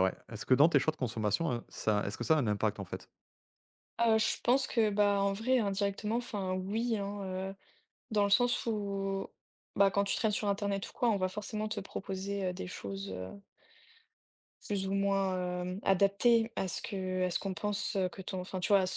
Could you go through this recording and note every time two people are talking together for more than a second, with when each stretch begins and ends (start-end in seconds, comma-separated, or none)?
none